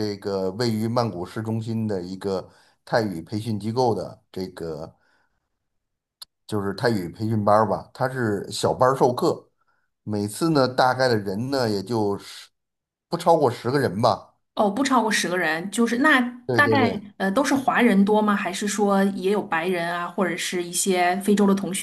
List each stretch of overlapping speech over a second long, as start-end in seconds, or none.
none